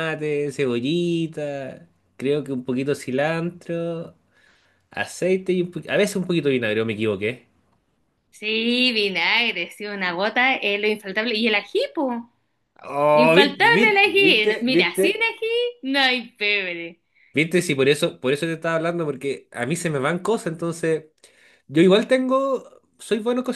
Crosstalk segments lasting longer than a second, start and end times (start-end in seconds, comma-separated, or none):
13.1-15.0